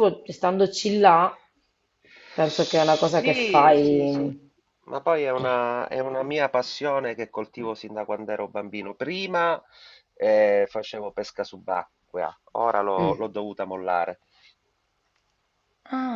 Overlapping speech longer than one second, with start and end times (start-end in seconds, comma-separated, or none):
2.5-4.3